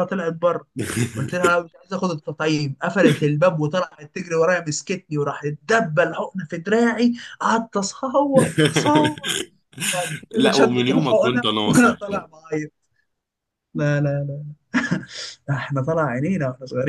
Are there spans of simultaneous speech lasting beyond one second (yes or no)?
yes